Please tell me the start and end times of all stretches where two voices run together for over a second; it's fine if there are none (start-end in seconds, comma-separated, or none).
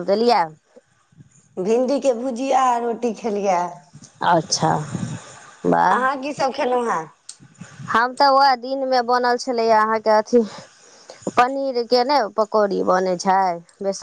none